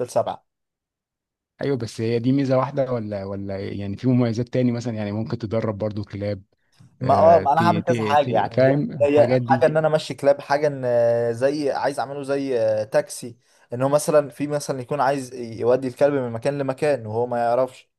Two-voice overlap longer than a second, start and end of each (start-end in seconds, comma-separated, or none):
7.0-9.7